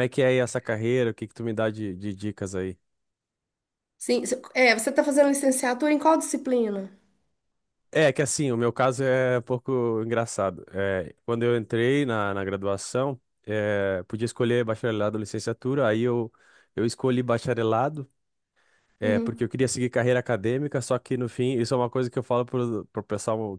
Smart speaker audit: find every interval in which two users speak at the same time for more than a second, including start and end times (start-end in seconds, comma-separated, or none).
none